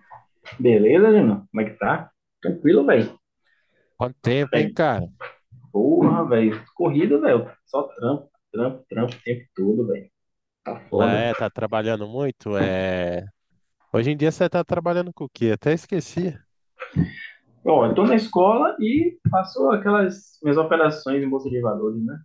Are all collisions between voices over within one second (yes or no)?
yes